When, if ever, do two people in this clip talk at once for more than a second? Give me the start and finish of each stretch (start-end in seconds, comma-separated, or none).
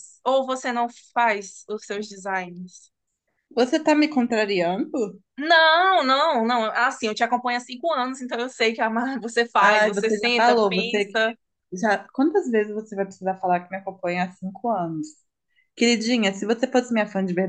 9.6-11.2